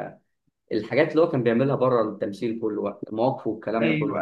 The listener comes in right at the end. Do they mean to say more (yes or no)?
yes